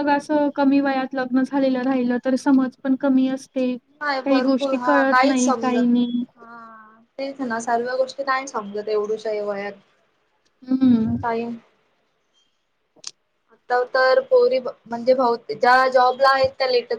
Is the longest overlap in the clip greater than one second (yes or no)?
yes